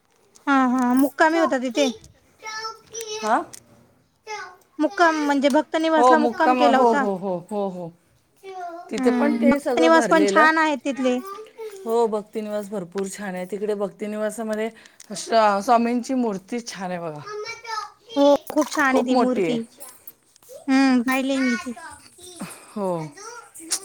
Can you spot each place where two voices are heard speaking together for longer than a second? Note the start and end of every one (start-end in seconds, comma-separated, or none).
9.0-10.6